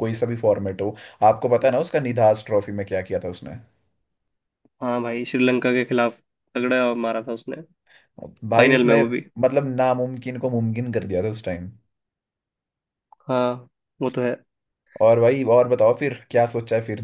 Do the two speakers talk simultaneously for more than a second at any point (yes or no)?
no